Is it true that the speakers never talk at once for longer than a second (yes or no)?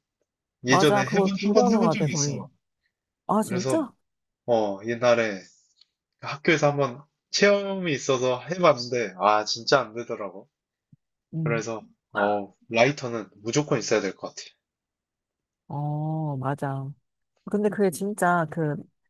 no